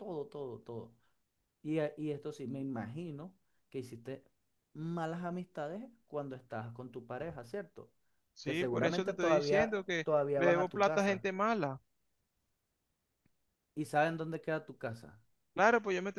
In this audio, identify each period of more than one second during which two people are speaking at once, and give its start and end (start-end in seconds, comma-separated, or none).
8.4-11.2